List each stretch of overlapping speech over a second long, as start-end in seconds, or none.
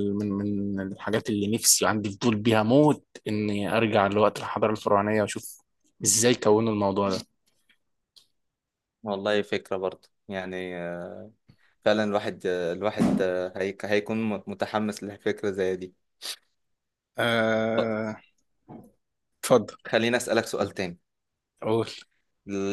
none